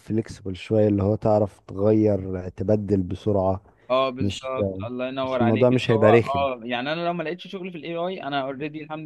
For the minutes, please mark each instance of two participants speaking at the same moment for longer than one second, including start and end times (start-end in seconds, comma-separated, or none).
5.2-6.5